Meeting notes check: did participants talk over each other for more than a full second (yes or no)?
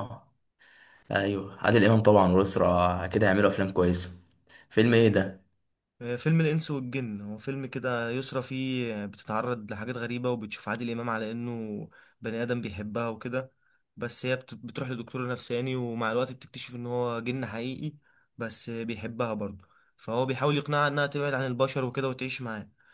no